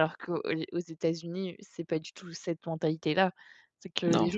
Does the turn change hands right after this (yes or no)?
no